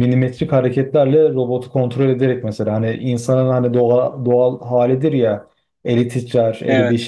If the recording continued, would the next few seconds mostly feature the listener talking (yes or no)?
no